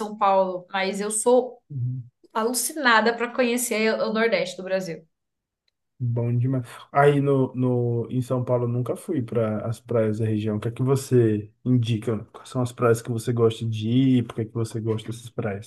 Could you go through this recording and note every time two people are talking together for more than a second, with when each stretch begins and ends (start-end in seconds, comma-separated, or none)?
none